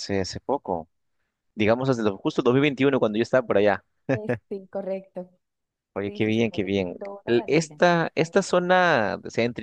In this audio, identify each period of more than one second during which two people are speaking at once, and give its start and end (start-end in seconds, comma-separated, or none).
6.0-8.9